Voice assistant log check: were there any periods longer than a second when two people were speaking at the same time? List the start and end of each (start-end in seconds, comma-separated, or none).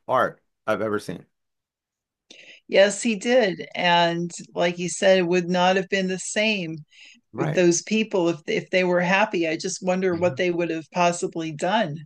none